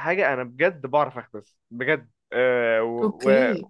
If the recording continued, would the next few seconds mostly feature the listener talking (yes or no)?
no